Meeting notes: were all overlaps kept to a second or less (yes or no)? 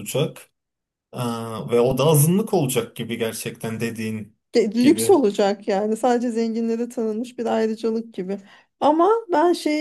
yes